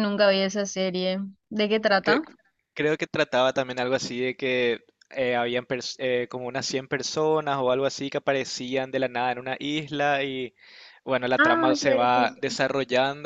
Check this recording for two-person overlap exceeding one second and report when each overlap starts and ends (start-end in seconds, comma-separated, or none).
11.4-12.6